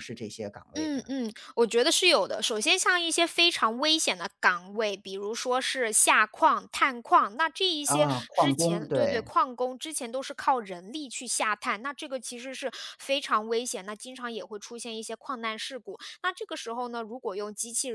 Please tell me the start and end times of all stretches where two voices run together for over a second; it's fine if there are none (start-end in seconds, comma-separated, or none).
7.8-9.3